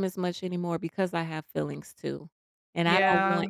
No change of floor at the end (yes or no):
yes